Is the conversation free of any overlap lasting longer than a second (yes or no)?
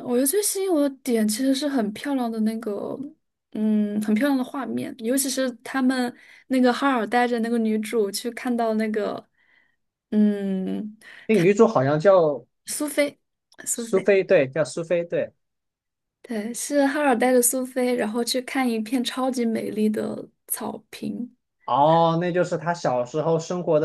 yes